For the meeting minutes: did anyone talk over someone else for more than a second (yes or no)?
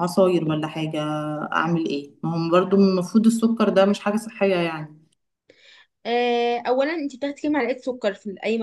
no